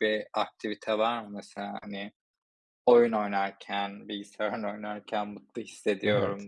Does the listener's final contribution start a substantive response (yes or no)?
no